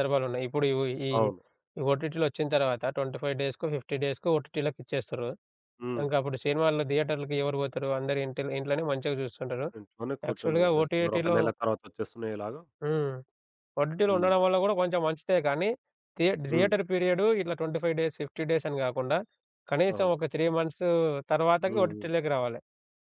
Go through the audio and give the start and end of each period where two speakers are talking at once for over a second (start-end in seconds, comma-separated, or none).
10.3-11.6